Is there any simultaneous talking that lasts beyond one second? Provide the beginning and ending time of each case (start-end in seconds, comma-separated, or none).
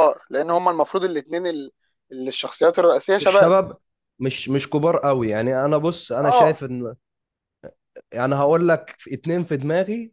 none